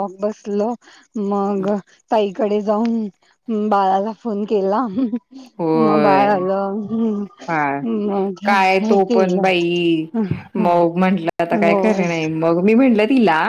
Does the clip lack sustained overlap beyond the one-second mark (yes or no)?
yes